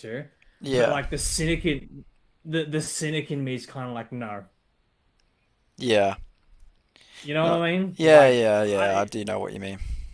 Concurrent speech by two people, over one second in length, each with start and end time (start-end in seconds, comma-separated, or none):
7.4-9.1